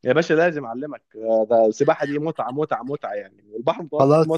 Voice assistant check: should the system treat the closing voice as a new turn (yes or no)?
yes